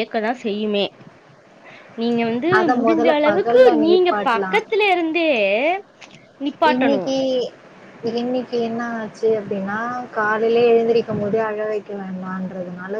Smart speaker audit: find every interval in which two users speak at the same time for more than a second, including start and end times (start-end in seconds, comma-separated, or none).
2.6-4.6